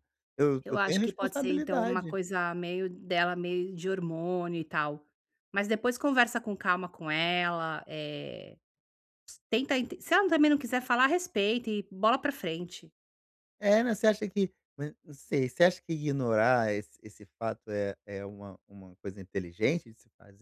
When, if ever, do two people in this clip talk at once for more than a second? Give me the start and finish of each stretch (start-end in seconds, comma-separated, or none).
0.6-2.2